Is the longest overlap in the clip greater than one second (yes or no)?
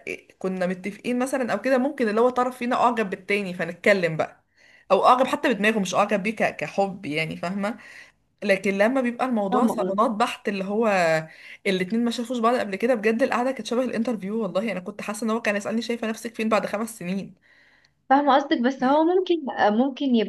no